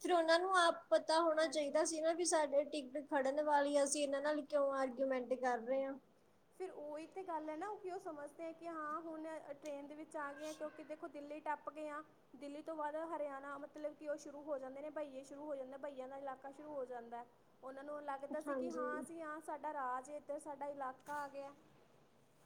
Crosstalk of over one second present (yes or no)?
no